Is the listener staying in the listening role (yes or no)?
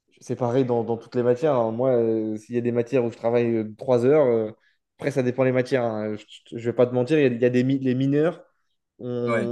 yes